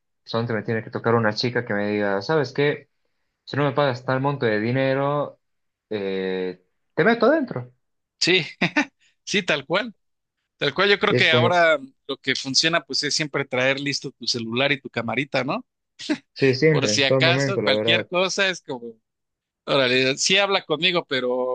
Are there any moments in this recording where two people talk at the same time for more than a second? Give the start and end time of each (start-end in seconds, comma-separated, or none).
16.7-18.1